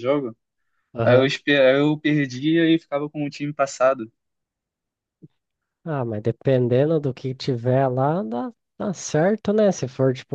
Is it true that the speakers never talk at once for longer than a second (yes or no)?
yes